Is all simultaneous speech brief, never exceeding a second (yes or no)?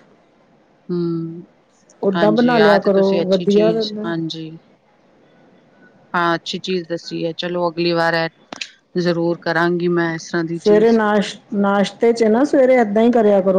no